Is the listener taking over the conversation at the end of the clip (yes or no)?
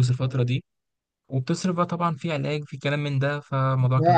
no